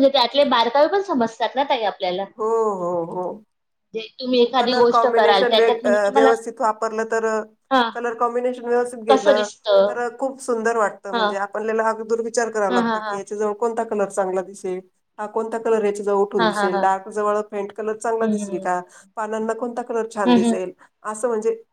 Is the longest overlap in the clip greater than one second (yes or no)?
yes